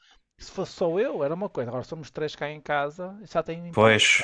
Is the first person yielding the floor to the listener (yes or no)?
yes